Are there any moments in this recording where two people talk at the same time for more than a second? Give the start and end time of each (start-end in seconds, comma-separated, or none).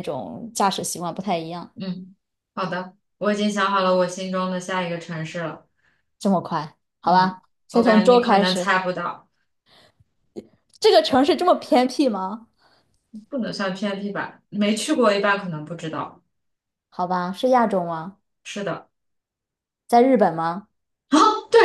7.0-8.7